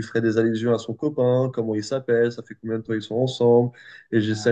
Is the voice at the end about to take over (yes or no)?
no